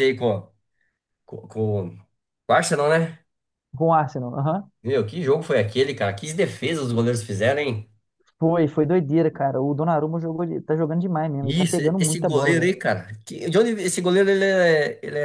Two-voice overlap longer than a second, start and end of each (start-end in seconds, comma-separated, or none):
11.4-12.7